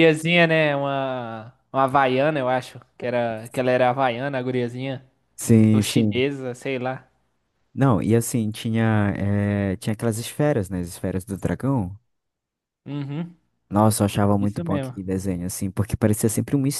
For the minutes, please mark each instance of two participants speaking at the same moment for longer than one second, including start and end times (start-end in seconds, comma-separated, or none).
none